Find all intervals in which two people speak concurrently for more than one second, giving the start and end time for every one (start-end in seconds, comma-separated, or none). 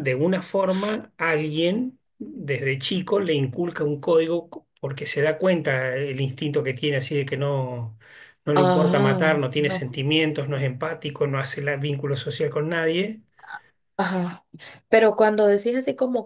8.5-10.0